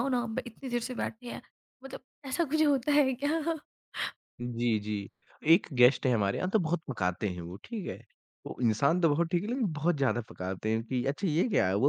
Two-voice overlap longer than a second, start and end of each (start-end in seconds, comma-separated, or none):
none